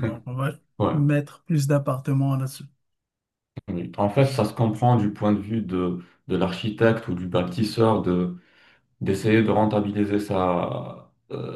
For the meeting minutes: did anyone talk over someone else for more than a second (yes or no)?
no